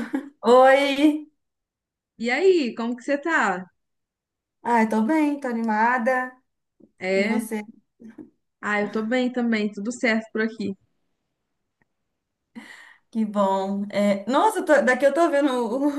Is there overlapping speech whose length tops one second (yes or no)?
no